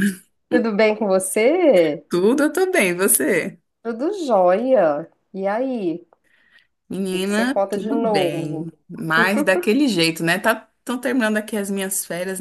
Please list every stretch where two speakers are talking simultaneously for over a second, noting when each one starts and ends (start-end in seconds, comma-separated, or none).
7.1-8.7